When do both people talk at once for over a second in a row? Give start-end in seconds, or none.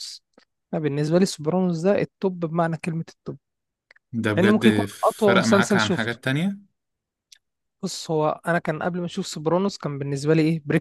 4.3-6.2